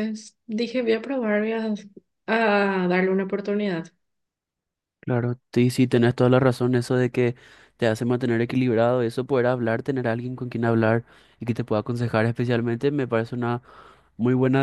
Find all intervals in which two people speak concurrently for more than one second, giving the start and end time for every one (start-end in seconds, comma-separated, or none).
none